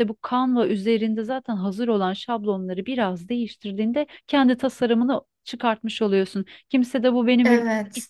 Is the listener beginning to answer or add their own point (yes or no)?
no